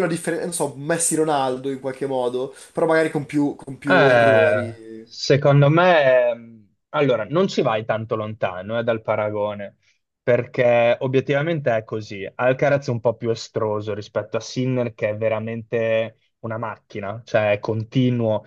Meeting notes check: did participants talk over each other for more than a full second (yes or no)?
yes